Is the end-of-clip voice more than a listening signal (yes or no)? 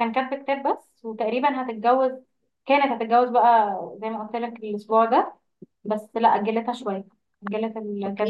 yes